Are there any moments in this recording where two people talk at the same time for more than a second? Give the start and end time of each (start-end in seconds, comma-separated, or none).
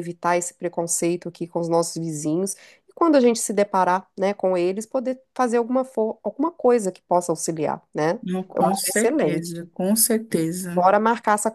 8.2-9.7